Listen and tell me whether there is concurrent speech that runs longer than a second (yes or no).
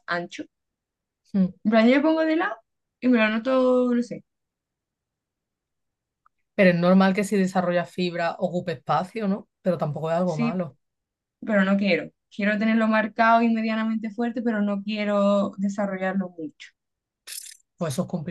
no